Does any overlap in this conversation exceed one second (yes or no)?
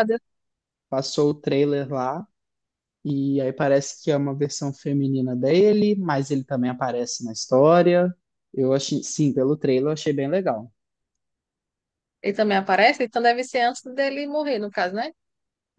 no